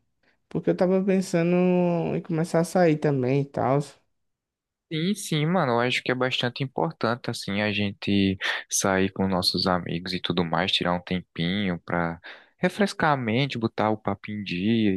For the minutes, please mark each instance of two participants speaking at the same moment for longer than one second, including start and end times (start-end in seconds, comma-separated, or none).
none